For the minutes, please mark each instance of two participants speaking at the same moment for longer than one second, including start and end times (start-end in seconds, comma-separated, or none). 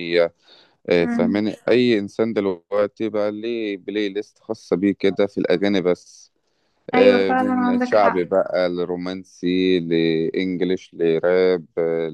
6.9-8.2